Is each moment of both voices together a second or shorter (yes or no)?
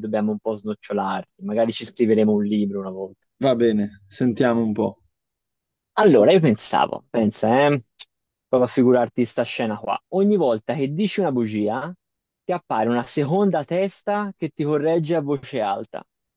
yes